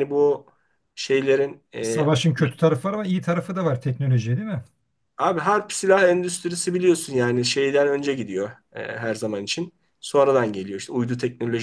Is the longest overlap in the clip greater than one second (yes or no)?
no